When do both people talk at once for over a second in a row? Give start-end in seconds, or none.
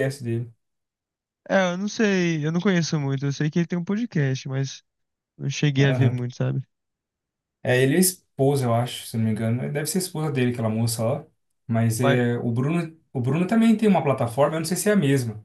none